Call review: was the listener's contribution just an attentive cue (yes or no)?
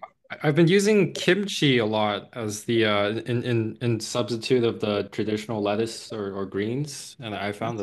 no